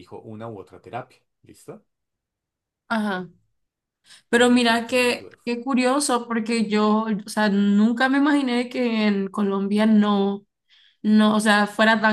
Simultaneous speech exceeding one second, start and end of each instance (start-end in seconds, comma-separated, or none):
4.3-5.5